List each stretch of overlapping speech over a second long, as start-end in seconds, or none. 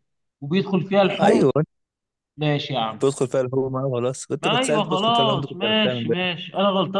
4.4-6.2